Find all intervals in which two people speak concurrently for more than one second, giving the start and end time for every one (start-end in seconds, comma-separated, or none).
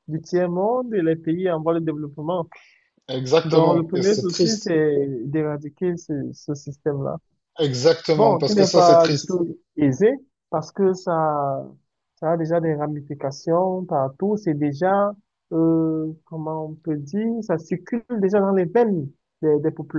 3.4-4.8, 8.2-9.4